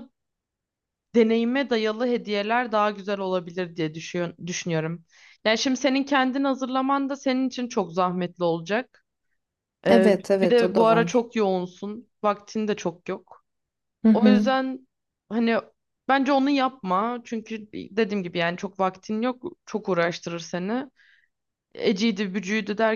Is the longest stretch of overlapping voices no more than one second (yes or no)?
no